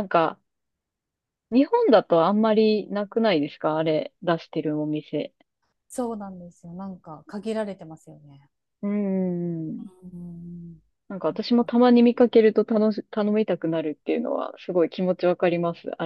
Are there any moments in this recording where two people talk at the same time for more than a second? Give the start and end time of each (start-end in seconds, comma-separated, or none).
none